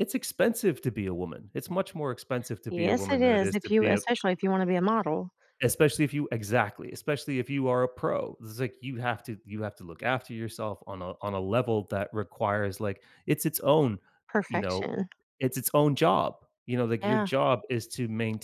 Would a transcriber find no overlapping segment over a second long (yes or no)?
no